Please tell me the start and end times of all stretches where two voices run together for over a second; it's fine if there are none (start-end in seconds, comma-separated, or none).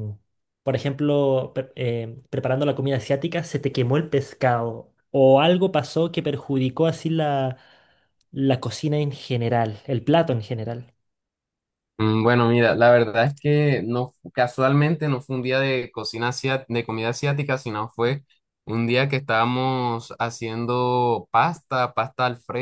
none